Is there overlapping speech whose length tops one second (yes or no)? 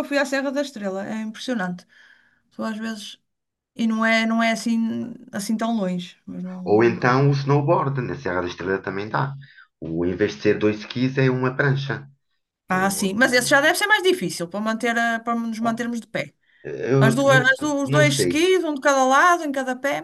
yes